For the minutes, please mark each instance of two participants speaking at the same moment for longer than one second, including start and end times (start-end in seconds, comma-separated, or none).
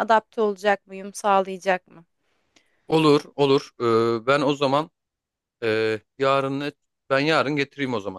none